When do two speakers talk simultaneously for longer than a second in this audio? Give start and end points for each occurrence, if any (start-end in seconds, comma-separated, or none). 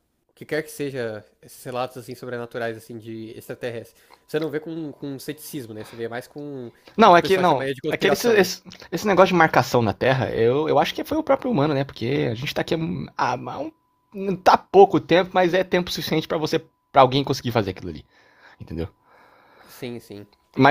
7.0-8.5